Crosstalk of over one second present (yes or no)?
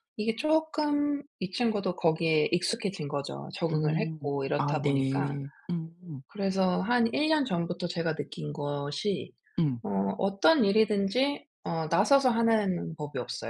yes